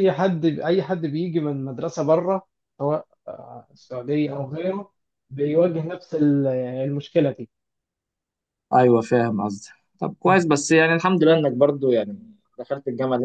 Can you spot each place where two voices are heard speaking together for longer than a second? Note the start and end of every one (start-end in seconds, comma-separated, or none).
none